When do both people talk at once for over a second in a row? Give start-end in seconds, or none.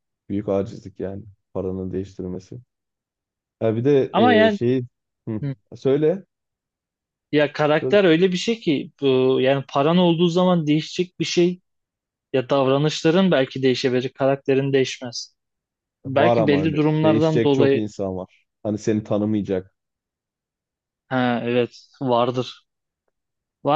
16.1-17.8